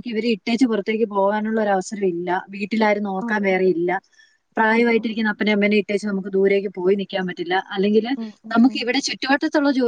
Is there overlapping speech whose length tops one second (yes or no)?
no